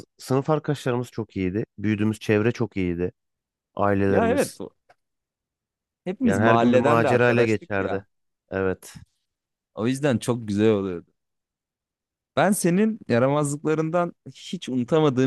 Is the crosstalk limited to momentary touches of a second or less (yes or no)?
no